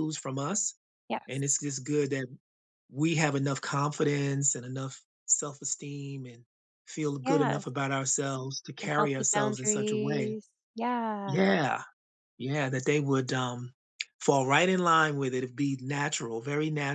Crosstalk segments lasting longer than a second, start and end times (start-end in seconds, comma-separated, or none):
8.8-10.4